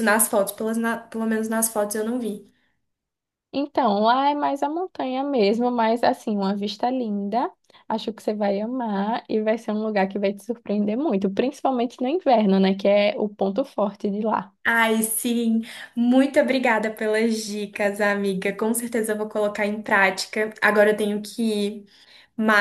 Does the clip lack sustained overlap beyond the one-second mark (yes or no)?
yes